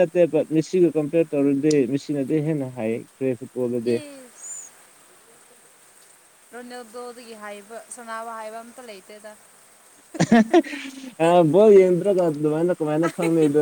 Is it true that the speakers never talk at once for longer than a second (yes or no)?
yes